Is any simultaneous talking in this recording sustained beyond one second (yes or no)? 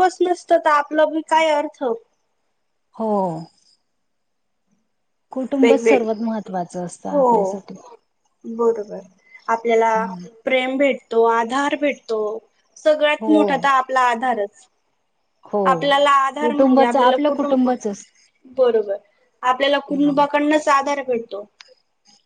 yes